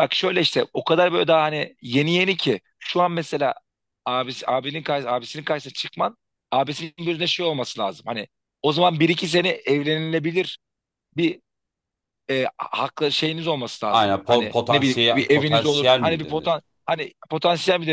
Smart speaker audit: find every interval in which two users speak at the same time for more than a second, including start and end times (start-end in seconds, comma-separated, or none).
13.8-16.6